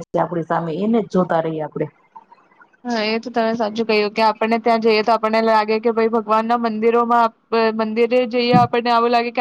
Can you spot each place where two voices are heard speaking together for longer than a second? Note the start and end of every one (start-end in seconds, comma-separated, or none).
none